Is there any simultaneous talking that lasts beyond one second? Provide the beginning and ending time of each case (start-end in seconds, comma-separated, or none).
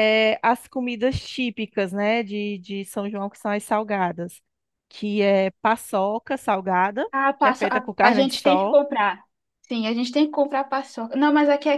7.1-8.8